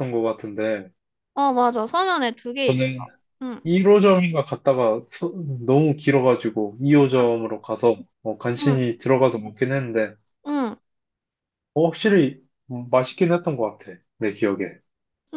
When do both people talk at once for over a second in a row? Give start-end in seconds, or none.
none